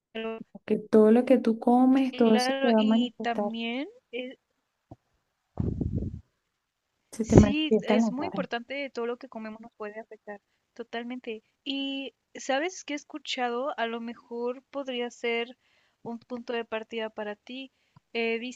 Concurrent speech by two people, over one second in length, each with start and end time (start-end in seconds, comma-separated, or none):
2.1-3.5, 7.2-8.4